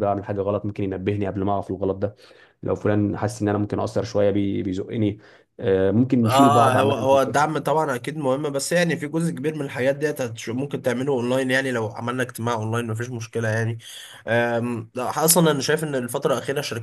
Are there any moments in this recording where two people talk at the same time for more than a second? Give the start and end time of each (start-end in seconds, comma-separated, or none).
6.2-7.4